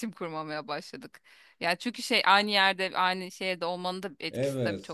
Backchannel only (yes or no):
no